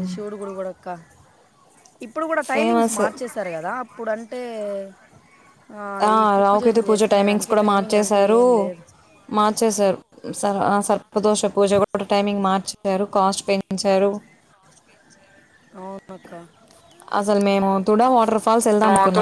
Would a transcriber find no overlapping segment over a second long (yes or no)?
no